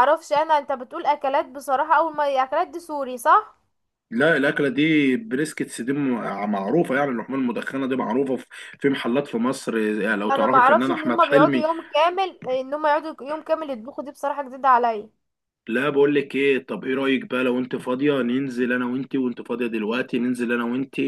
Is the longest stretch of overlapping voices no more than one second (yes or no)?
no